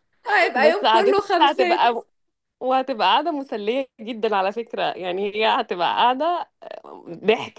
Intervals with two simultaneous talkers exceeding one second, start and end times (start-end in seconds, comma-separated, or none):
0.6-1.9